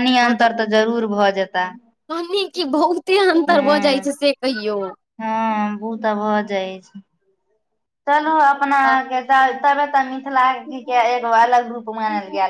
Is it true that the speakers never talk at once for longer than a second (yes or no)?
yes